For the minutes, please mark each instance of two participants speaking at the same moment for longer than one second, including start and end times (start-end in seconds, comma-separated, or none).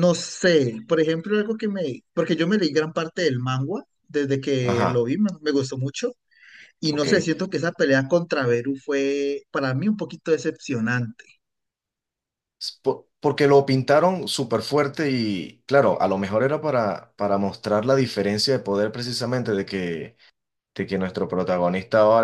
none